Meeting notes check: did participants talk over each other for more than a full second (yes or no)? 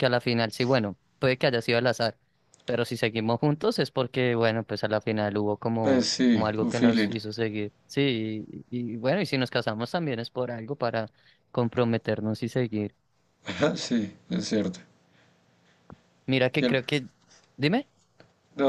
yes